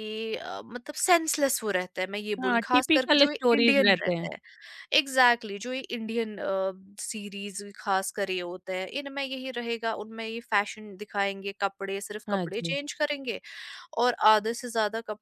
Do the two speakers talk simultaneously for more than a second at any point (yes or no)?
yes